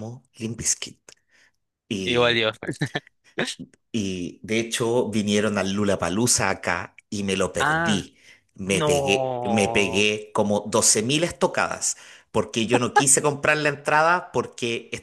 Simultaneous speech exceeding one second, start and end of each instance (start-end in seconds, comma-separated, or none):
8.7-10.1